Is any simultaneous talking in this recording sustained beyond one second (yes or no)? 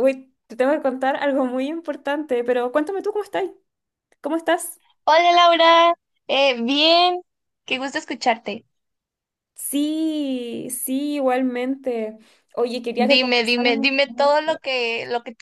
yes